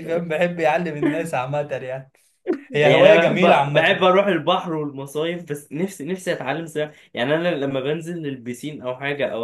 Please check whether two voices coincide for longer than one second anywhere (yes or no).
yes